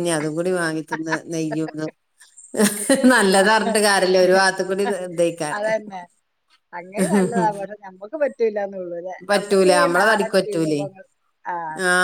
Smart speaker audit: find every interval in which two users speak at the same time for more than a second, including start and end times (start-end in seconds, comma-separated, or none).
9.3-10.9